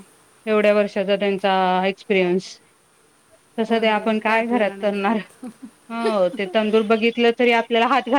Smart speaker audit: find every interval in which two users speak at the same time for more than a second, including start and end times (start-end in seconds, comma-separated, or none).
3.7-5.2